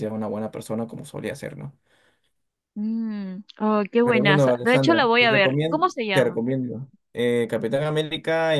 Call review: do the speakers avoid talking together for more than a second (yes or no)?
no